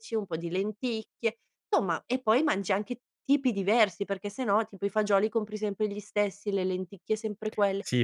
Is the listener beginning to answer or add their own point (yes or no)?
yes